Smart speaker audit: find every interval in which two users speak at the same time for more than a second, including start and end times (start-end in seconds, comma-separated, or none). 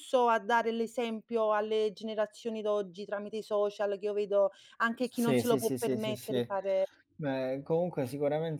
5.0-6.5